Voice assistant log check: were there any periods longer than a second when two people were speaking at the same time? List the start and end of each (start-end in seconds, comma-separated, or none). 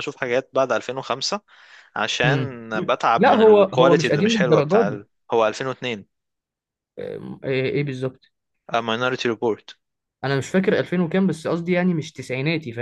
3.2-5.0